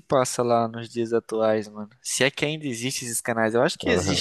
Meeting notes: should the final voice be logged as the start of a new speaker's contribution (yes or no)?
yes